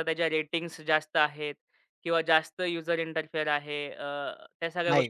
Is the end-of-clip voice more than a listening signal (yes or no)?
no